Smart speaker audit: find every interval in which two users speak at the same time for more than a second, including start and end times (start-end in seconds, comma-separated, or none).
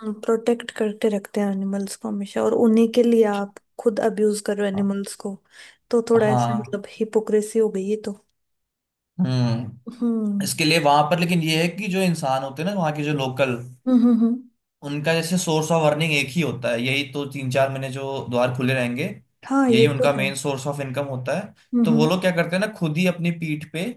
none